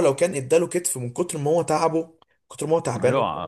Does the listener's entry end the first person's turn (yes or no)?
yes